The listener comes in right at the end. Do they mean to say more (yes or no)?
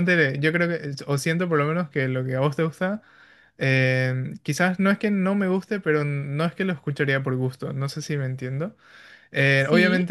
no